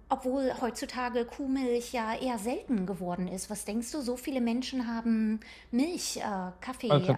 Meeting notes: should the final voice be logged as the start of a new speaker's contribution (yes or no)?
no